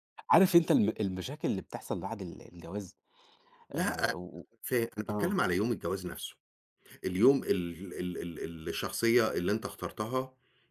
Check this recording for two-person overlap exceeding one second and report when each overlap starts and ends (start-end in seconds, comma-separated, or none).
none